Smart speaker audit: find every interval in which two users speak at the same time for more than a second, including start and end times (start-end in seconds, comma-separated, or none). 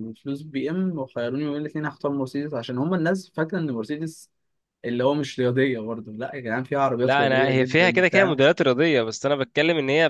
7.0-8.4